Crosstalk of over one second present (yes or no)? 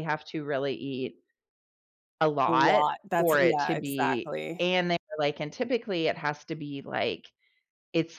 yes